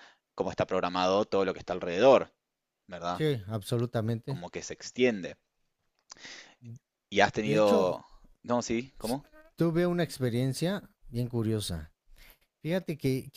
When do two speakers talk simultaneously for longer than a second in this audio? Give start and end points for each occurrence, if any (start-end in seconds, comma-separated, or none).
none